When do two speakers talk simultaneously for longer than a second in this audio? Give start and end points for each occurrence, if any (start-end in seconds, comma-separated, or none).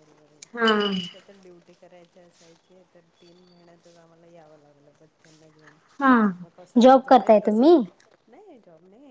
6.4-7.7